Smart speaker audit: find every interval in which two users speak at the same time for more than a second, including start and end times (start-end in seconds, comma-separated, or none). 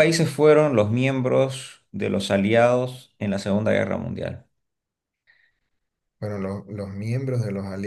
none